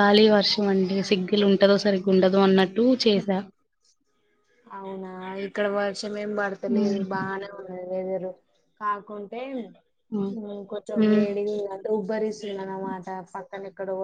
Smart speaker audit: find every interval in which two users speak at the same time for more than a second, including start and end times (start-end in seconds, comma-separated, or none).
none